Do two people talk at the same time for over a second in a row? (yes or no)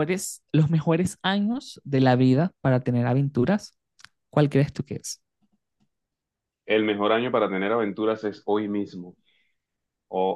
no